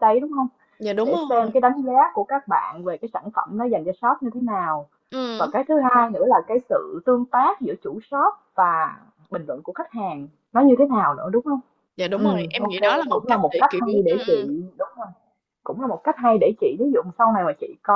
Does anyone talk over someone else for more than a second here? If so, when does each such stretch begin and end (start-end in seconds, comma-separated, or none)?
12.2-14.5